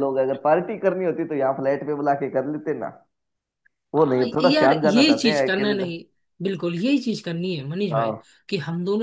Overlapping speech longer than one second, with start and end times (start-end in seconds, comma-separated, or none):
4.0-5.9